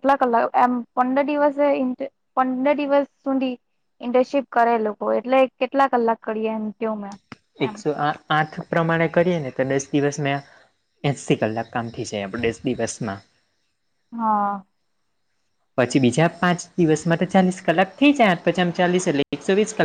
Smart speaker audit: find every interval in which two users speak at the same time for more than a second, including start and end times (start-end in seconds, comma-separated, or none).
none